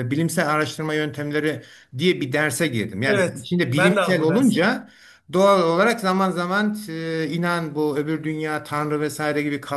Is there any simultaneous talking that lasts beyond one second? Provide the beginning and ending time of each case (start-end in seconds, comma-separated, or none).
3.0-4.6